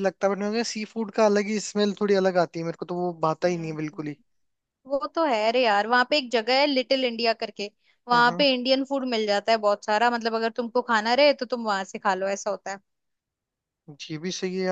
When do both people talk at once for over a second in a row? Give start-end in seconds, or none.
none